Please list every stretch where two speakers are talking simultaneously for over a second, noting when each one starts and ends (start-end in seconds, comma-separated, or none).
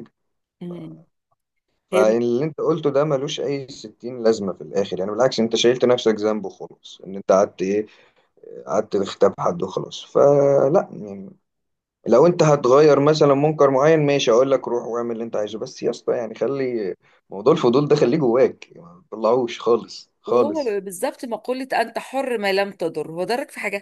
none